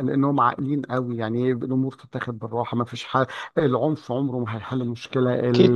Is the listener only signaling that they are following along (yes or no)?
yes